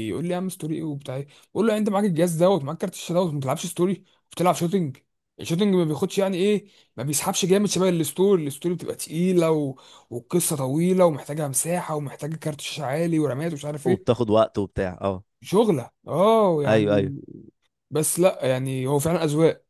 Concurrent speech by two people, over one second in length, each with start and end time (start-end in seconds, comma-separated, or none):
none